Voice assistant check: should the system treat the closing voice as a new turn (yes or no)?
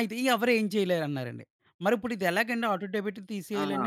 no